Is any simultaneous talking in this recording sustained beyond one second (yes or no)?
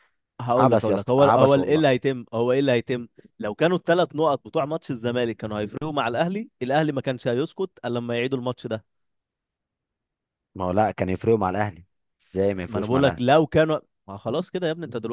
yes